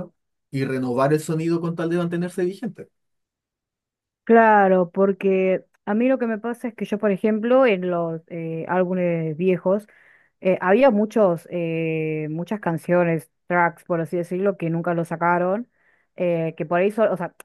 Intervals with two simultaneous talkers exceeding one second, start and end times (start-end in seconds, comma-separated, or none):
none